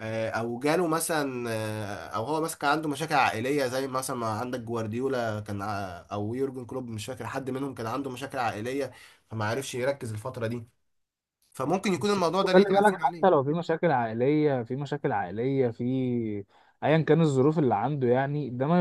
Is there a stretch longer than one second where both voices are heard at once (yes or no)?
yes